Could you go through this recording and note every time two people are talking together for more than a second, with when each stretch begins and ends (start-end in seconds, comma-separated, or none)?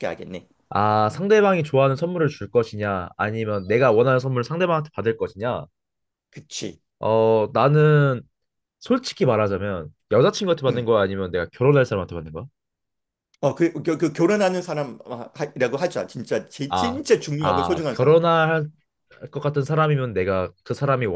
16.7-18.1